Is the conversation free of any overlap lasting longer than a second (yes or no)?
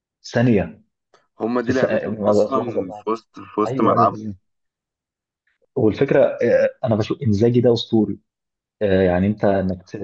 no